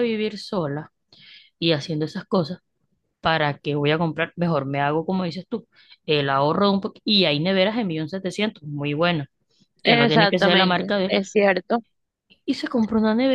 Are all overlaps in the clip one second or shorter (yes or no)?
no